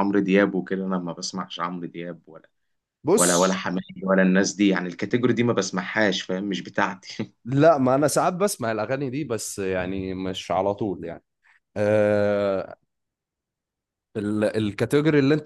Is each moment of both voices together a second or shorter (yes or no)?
yes